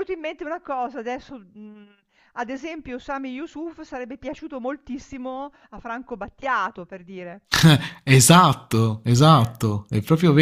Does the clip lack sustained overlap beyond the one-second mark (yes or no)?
yes